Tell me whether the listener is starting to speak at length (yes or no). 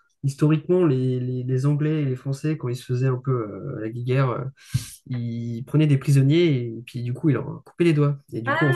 no